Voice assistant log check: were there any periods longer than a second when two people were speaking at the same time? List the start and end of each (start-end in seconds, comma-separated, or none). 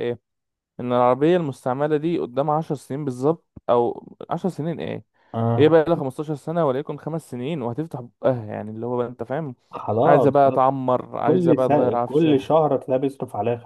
11.2-12.5